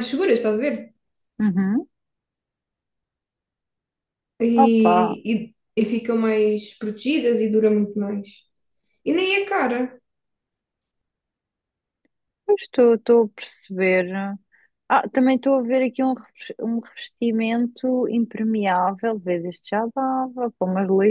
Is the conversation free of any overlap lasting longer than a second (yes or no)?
yes